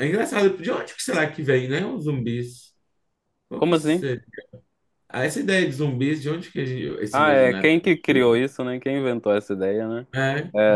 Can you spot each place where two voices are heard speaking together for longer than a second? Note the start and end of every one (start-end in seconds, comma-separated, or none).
7.1-8.4